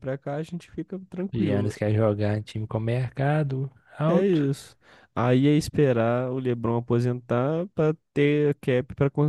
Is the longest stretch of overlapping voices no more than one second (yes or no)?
yes